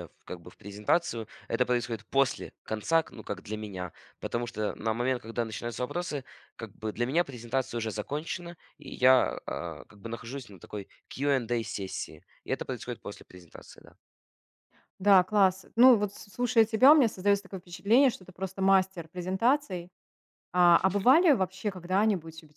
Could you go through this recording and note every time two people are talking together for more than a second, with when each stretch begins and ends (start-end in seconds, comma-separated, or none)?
none